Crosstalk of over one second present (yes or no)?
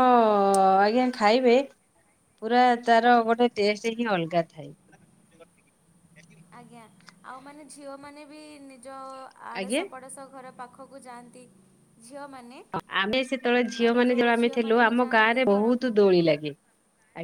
yes